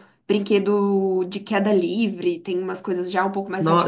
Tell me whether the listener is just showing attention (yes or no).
no